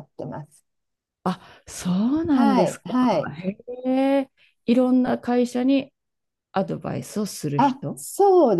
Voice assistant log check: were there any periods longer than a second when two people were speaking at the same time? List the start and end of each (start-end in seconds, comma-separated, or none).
none